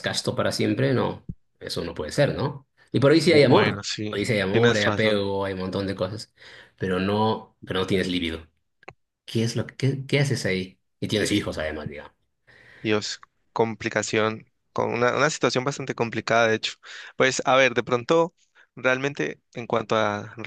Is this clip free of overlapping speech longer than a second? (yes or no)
no